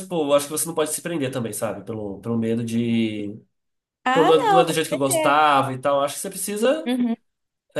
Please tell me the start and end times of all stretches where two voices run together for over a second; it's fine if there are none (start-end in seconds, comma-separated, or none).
4.1-5.4